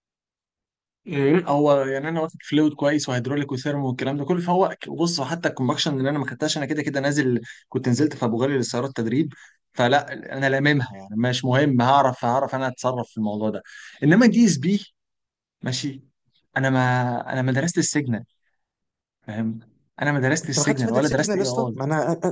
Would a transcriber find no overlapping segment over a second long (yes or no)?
no